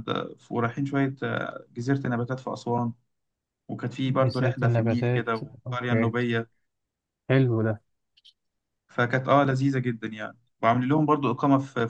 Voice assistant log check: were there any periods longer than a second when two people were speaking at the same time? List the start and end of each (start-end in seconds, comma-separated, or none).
4.1-6.1